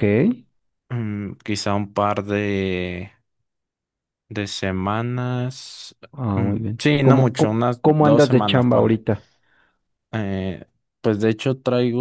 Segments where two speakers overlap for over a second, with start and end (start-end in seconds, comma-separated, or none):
6.3-9.0